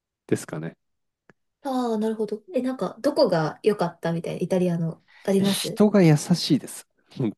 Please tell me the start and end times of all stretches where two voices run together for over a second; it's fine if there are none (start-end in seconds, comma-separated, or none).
none